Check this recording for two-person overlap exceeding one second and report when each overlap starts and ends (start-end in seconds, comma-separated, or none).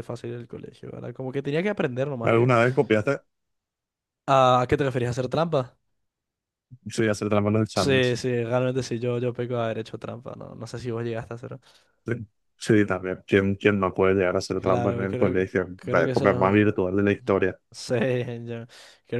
14.6-16.8